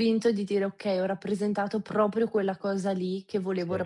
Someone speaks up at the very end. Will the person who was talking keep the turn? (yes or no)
yes